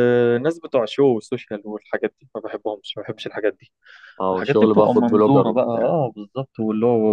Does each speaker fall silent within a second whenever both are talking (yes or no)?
no